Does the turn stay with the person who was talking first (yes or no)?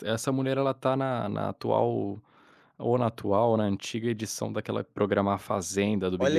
no